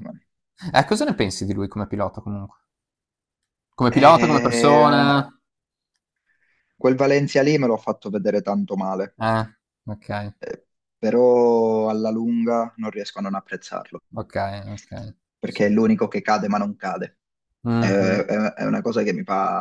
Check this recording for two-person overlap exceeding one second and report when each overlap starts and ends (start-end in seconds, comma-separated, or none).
3.9-5.1